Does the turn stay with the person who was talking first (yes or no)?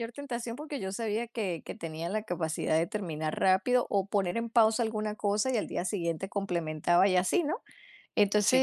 yes